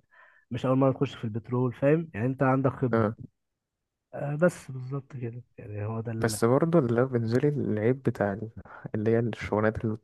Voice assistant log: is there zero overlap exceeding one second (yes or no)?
yes